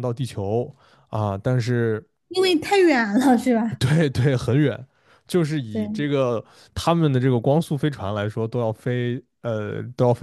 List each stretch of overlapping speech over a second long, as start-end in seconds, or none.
none